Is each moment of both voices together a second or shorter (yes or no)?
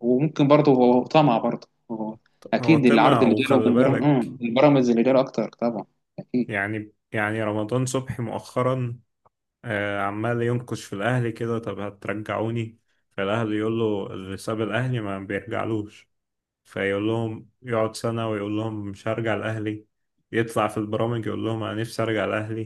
no